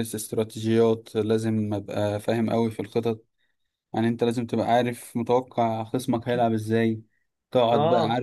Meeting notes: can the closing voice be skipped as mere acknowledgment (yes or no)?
yes